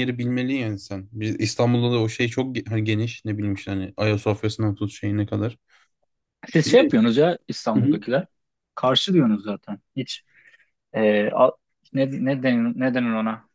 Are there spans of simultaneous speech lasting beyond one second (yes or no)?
no